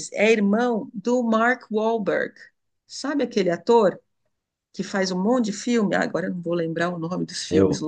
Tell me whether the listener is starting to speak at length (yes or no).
yes